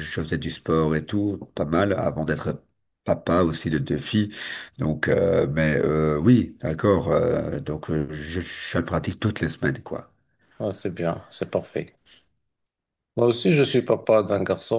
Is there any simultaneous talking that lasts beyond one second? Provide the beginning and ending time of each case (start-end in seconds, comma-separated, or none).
none